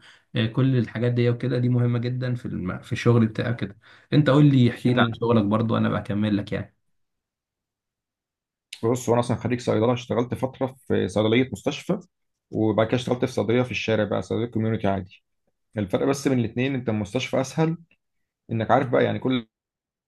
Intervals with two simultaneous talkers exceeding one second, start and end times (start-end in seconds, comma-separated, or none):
none